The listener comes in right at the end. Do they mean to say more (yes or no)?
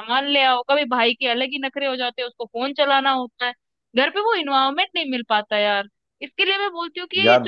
no